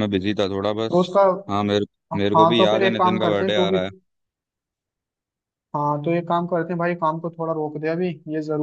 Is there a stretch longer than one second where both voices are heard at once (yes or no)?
yes